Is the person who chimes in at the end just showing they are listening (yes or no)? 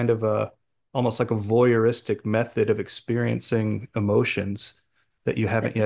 no